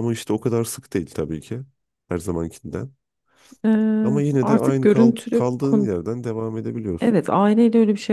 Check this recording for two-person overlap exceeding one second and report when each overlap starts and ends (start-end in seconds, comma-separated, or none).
4.0-5.9